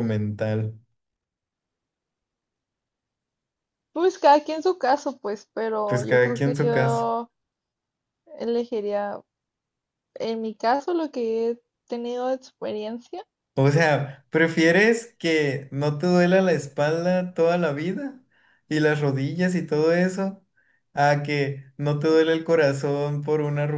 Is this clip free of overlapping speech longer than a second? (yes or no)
no